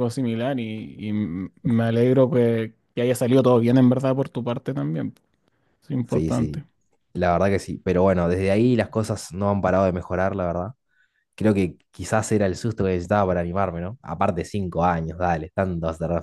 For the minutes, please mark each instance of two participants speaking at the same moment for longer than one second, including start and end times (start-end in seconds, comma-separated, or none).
none